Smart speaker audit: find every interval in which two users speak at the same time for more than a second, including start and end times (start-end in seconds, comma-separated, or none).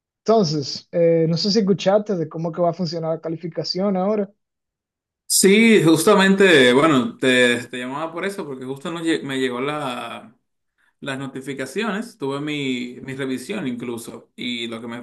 none